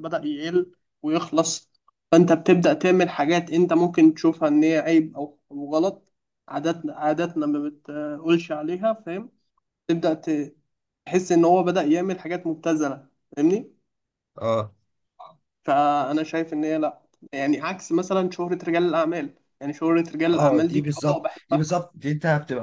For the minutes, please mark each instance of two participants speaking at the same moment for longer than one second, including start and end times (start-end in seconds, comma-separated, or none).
20.3-21.9